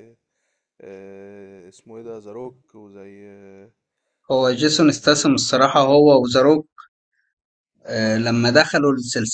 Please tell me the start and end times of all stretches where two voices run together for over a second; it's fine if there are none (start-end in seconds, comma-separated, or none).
4.7-6.0